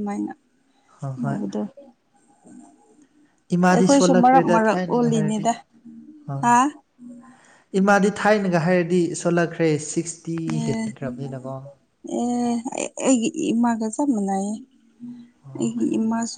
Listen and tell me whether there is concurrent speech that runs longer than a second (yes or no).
yes